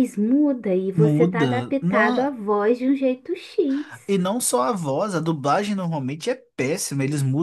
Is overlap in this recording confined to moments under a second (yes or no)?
no